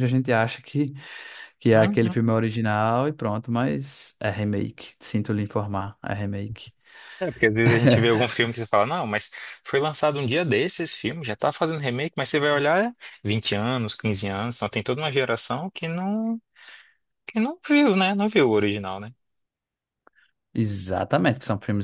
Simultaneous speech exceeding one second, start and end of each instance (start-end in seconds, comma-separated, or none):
none